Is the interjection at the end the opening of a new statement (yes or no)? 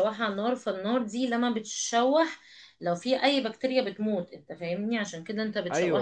yes